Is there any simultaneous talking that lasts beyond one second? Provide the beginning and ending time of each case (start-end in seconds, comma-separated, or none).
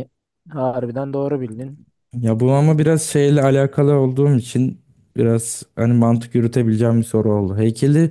none